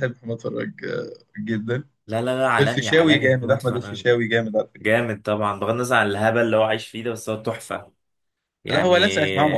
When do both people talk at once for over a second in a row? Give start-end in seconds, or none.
2.6-4.0